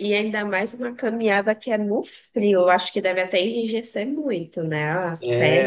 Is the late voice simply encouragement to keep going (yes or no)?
no